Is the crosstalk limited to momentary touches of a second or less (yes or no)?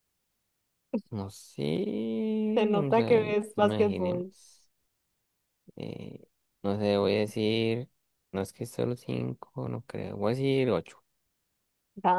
no